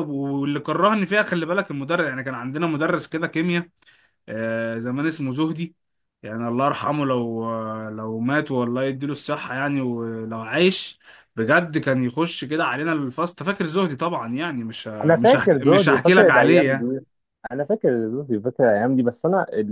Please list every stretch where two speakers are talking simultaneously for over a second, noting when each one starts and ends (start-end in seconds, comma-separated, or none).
15.0-16.9